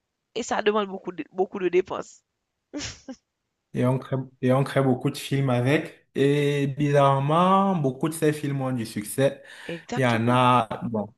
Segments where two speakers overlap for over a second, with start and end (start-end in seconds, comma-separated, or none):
none